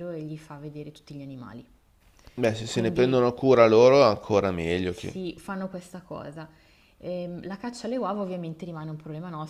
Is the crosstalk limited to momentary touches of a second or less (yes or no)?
yes